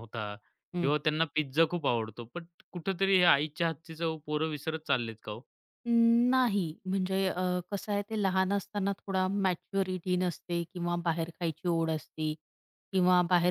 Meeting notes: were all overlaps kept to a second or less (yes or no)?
yes